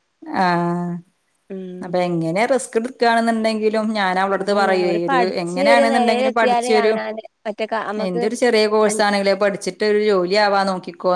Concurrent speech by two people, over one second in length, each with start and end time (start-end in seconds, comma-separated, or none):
4.4-6.9